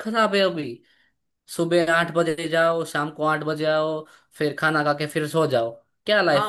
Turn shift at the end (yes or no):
yes